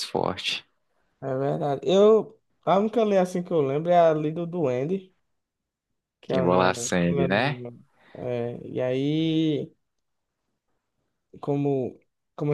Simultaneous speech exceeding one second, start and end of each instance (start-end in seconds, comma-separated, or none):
6.3-7.6